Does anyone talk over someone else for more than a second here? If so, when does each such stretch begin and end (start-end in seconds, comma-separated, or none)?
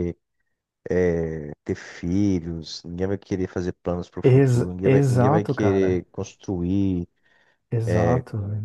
4.2-6.0